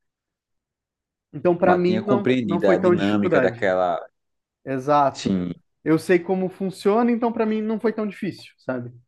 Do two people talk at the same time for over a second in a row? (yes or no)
yes